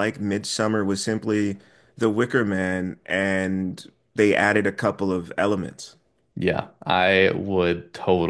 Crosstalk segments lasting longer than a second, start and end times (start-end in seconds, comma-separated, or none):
none